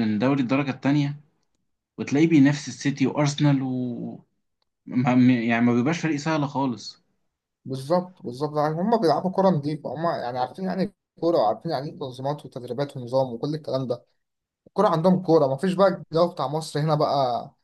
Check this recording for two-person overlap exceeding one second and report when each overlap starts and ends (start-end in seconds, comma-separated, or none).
none